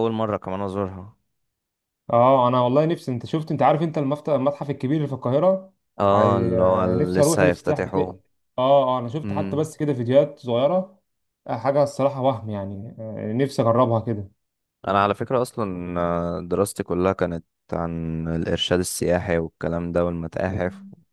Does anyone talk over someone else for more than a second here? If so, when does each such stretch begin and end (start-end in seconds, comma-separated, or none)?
6.1-8.0